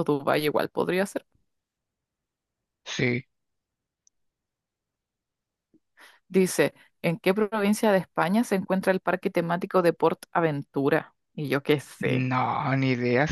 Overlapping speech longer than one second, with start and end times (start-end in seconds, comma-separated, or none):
none